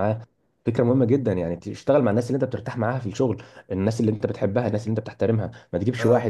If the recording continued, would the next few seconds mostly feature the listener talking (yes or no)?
no